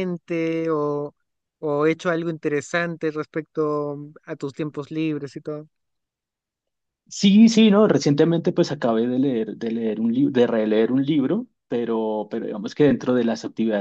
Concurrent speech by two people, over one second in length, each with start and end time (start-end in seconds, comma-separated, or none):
none